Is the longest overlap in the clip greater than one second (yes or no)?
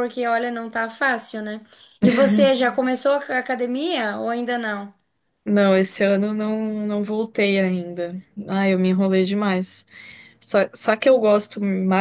no